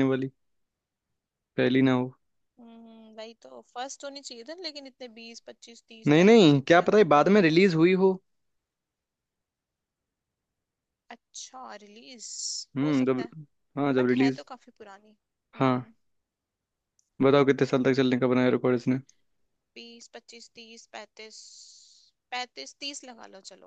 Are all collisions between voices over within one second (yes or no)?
no